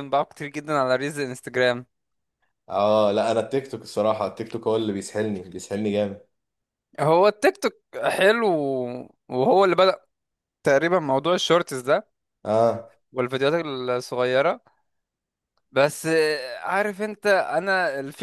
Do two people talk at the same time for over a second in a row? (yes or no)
no